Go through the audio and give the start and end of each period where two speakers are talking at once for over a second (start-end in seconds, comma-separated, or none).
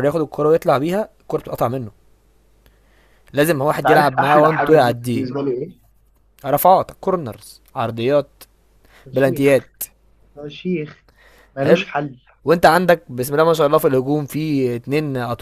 3.8-5.3